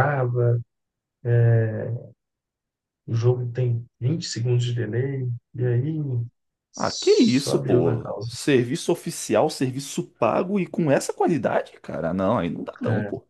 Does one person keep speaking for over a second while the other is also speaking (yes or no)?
yes